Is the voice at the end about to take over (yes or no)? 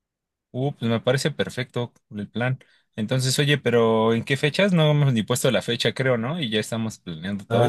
yes